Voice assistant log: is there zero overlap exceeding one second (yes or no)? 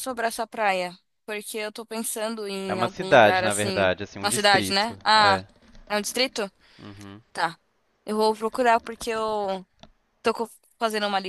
no